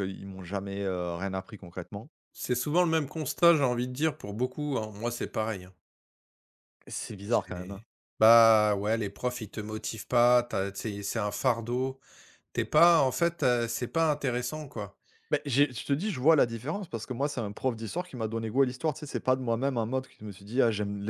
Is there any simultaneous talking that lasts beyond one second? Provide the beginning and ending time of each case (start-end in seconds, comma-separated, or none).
none